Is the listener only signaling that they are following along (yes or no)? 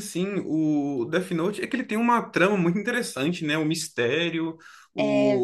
yes